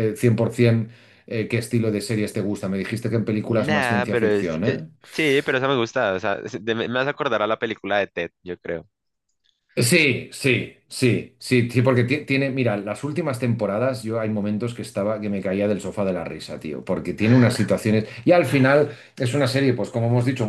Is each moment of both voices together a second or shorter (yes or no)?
no